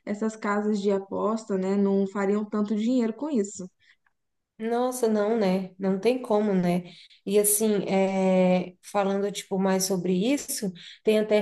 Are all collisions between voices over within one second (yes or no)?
yes